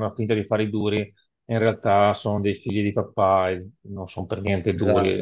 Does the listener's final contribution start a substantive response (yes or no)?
no